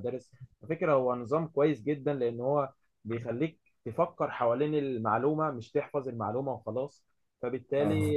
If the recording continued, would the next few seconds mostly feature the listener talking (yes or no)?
no